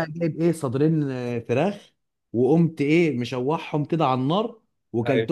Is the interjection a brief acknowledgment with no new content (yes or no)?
yes